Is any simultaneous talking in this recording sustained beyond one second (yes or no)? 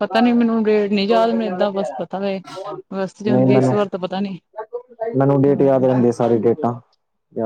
no